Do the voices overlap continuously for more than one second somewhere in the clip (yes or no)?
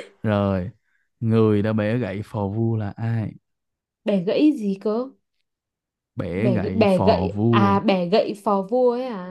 yes